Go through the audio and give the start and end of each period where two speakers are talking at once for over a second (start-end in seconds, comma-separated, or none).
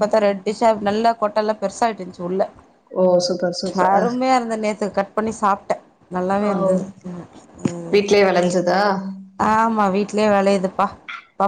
none